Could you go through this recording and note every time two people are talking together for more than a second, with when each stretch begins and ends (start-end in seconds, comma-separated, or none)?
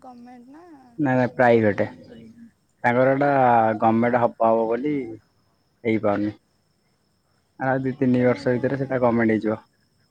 8.2-9.4